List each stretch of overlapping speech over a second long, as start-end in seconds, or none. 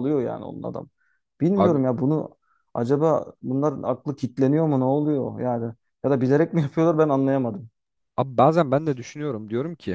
none